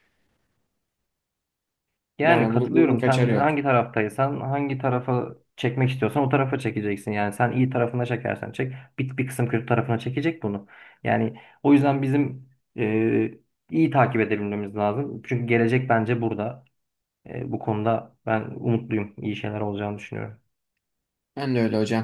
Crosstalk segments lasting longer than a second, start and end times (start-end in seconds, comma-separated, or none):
2.2-3.6